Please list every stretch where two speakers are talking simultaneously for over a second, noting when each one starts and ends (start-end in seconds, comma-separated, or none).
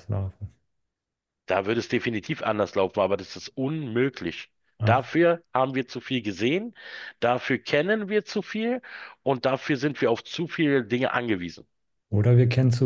none